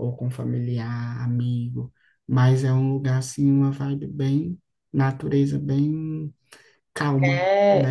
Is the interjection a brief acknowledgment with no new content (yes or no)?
no